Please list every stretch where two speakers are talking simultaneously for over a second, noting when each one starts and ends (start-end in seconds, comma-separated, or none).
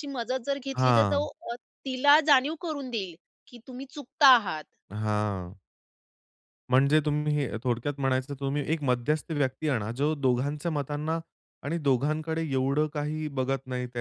none